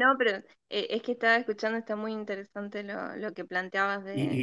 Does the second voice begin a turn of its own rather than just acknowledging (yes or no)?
yes